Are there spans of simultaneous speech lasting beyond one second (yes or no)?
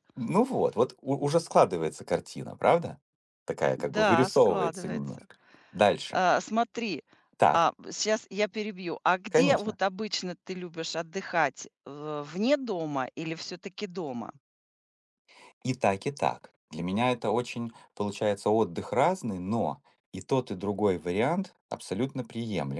yes